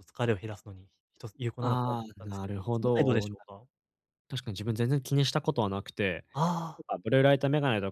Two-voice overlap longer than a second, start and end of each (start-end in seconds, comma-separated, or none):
1.6-3.3